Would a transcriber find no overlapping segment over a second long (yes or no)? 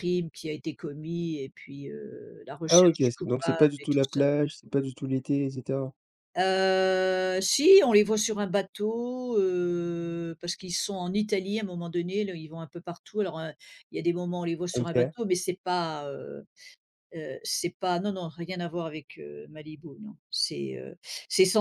no